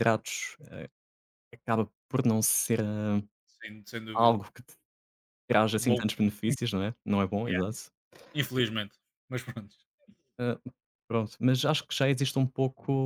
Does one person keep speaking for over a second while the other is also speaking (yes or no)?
no